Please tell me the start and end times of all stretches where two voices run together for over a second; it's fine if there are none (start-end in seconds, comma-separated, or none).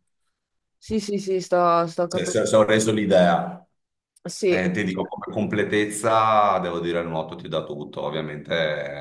none